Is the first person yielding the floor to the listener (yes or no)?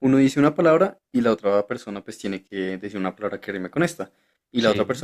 no